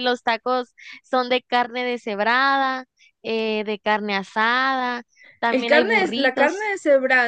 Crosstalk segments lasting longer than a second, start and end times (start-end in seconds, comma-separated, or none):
5.5-6.7